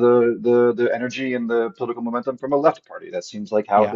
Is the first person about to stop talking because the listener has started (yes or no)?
no